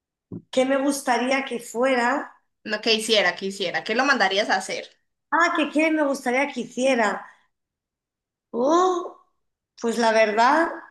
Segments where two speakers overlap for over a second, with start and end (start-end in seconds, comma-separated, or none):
none